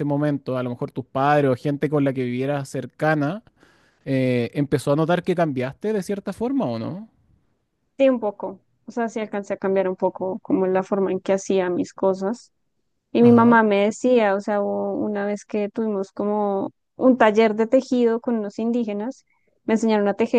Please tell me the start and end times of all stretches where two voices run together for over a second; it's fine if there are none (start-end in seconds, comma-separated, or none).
none